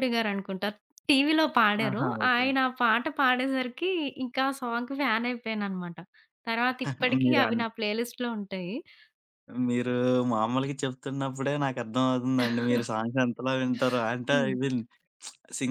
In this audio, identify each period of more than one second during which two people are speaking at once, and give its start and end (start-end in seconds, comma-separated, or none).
none